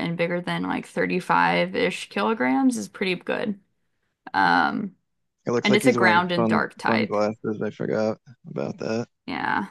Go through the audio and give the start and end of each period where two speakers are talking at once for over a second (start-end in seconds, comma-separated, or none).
5.6-7.2